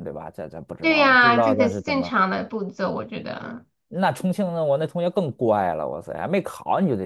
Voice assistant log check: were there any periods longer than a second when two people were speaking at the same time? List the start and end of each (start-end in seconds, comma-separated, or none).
0.8-2.1